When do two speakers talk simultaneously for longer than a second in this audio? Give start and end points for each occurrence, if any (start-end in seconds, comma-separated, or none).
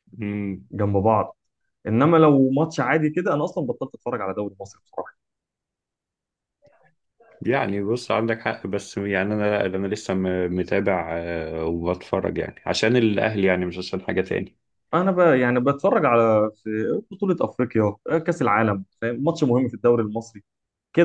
none